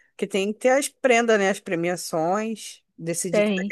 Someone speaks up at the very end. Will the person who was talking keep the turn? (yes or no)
yes